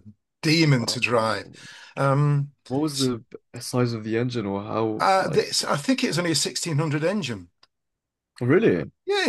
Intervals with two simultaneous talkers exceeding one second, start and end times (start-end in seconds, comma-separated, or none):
none